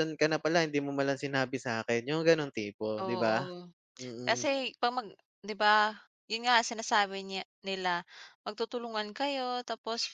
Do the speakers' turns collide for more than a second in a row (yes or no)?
no